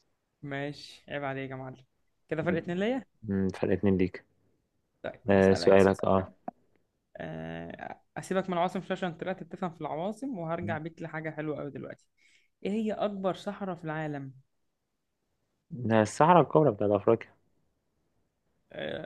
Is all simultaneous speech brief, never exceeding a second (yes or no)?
yes